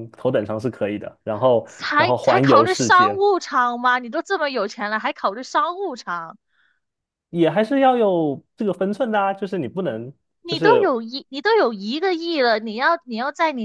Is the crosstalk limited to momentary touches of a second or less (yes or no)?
no